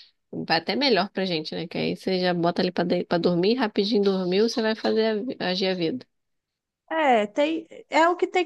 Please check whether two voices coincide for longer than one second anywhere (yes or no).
no